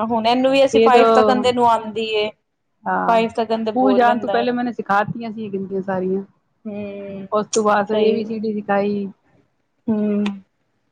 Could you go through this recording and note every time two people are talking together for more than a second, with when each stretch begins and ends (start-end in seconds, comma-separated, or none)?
3.0-4.4